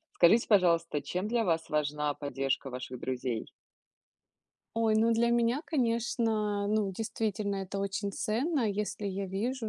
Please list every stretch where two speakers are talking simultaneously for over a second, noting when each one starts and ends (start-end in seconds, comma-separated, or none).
none